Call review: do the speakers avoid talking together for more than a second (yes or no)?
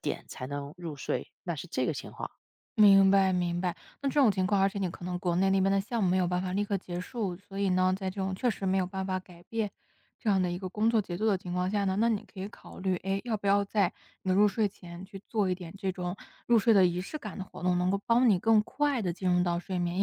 yes